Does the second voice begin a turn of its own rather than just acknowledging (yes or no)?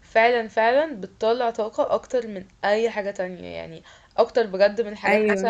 no